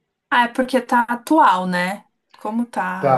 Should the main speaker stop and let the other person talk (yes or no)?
no